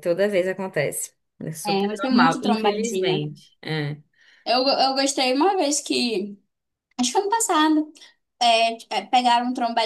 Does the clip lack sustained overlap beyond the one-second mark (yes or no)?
no